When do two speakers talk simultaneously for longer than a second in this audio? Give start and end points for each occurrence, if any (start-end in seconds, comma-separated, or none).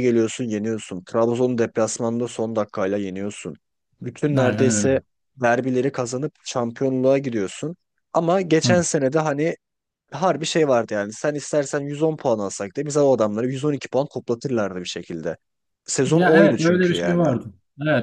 16.1-17.3